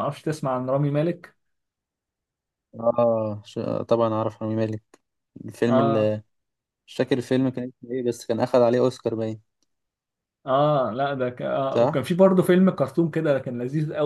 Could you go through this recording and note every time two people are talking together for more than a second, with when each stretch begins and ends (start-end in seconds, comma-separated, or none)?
none